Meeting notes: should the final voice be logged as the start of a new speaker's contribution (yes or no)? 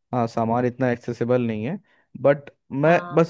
no